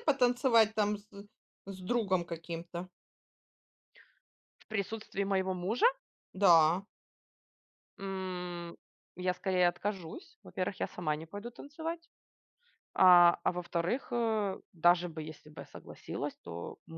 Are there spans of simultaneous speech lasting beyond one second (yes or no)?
no